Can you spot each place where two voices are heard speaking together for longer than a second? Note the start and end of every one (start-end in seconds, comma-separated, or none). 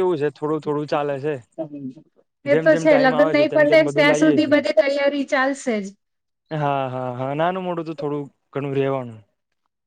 2.5-4.5